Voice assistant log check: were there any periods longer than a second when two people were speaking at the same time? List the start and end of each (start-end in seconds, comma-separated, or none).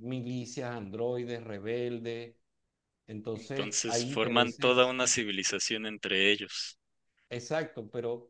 3.3-5.0